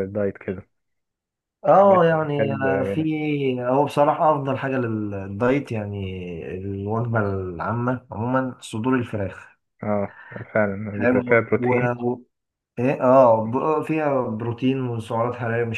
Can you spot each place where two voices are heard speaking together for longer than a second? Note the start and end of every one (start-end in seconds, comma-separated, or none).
1.7-3.1